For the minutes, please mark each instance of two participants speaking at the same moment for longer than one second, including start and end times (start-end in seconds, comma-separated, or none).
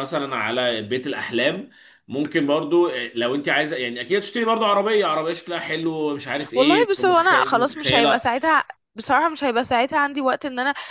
6.5-8.2